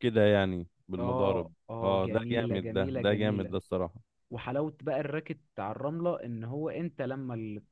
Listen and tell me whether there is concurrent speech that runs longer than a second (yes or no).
yes